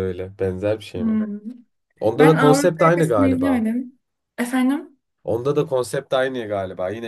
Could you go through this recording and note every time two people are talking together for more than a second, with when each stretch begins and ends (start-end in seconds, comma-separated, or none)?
2.2-3.7